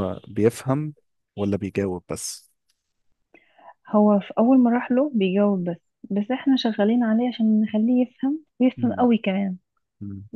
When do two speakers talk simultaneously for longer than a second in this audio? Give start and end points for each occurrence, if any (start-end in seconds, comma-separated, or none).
none